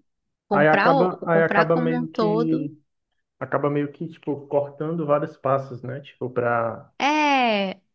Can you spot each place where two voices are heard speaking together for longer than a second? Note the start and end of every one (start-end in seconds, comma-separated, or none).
0.5-2.7